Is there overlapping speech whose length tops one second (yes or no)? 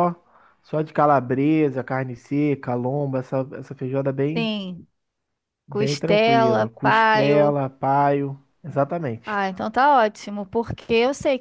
yes